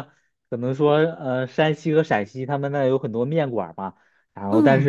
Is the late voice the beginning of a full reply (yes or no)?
no